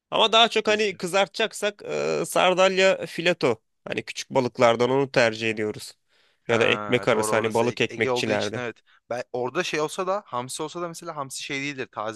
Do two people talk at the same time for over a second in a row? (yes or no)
yes